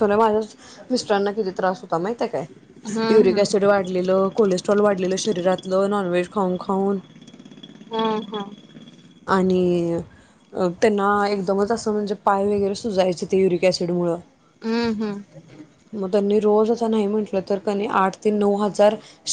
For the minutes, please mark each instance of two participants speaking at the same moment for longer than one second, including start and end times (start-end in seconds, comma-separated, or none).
none